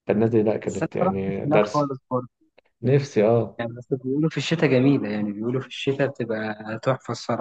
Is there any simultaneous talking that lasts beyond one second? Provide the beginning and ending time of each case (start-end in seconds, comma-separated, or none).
0.7-1.9